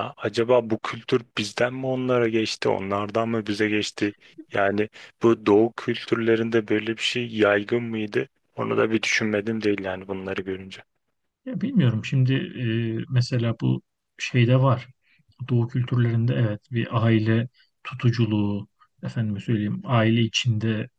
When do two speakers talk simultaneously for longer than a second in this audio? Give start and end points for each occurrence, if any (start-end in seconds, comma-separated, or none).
none